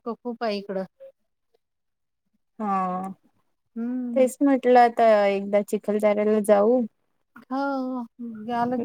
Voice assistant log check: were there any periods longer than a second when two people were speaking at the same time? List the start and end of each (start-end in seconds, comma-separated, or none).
none